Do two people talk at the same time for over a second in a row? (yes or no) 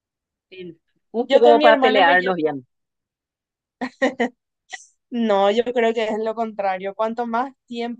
yes